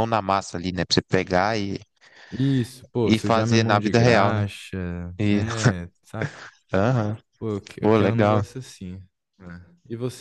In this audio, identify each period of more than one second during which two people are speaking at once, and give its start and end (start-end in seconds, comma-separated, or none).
3.0-4.4